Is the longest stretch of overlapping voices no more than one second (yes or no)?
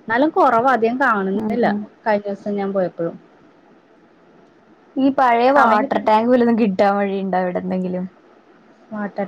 yes